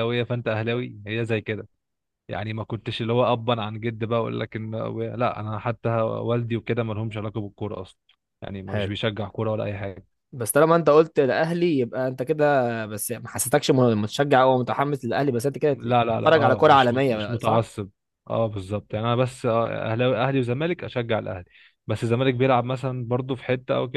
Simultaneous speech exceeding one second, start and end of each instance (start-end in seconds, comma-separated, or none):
15.7-17.7